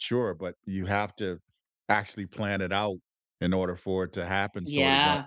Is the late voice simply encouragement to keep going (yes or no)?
no